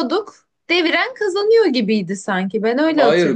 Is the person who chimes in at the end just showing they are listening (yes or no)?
no